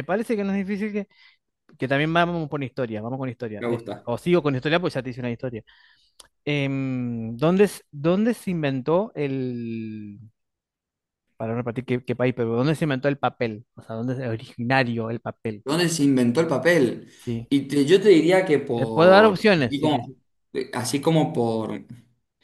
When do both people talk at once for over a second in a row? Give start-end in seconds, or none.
18.8-20.1